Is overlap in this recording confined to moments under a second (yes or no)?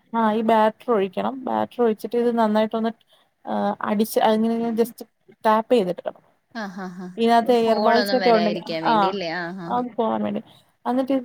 no